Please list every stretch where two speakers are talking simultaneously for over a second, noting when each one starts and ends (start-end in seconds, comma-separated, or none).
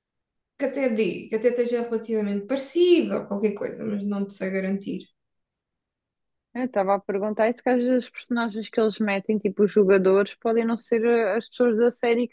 none